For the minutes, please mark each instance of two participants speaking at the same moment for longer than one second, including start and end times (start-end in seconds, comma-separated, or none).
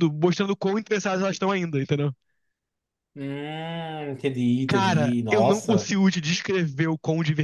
4.7-5.9